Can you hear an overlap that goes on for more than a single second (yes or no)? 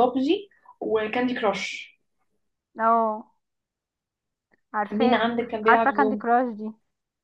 yes